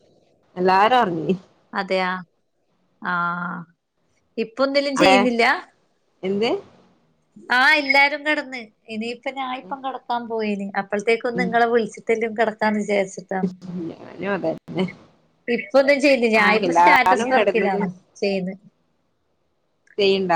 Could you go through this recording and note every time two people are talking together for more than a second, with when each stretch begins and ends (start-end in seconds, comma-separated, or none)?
none